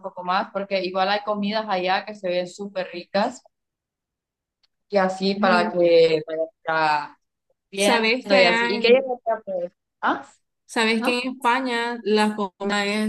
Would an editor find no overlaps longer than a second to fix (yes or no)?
no